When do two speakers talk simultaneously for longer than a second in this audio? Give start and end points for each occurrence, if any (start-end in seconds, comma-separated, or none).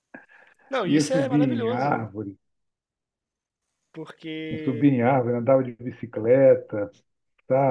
0.8-2.1